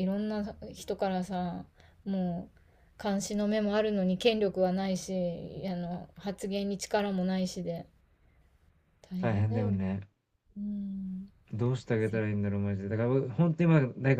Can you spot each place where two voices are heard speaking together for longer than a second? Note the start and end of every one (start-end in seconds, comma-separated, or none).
none